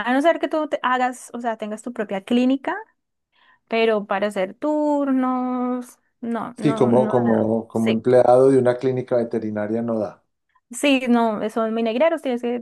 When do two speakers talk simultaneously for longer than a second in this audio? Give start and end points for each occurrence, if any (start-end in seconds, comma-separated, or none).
6.6-8.0